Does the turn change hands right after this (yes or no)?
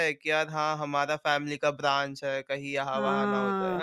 yes